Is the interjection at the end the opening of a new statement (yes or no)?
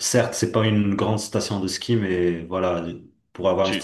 no